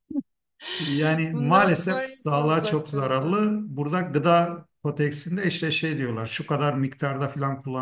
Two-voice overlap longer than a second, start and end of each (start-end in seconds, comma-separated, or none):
1.3-3.5